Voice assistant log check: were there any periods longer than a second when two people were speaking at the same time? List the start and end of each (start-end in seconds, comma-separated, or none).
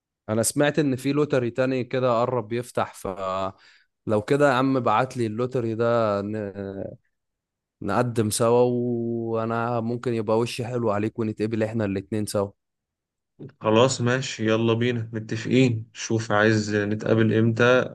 none